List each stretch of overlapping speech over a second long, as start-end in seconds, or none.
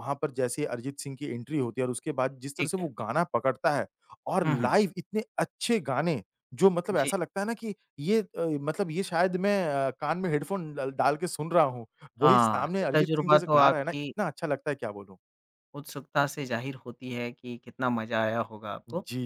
12.2-14.1